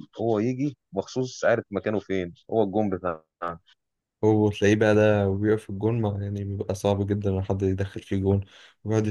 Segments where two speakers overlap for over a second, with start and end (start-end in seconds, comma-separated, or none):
none